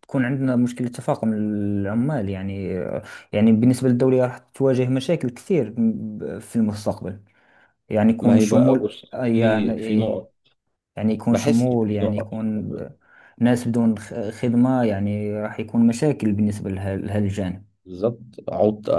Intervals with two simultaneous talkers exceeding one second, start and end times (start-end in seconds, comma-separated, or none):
8.2-9.8, 11.3-12.7